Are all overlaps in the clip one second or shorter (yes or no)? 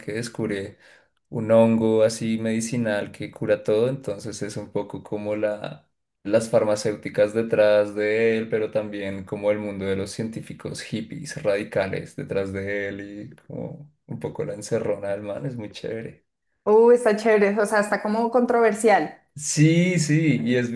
yes